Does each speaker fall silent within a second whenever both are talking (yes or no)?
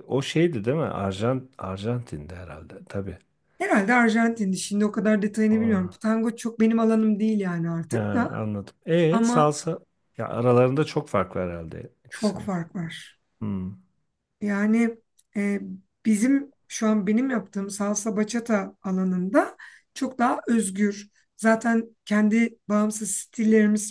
yes